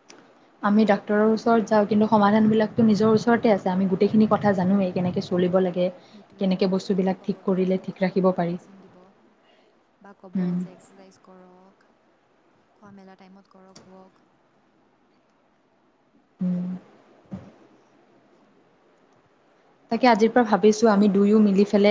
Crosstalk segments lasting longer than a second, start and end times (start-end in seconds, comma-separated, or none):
6.4-8.6